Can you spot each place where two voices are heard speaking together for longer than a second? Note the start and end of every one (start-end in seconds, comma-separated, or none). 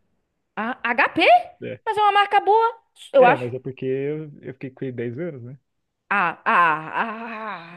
none